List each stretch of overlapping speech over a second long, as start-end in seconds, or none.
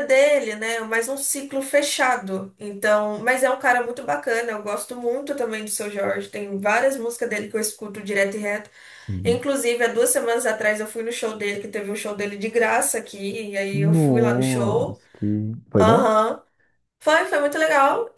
13.7-15.0